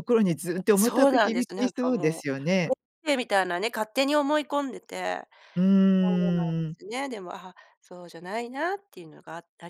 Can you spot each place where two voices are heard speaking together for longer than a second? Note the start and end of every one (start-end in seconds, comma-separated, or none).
0.8-2.3